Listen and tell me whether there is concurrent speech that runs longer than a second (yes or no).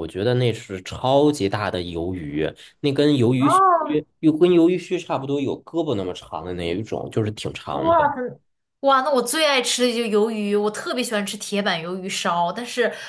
no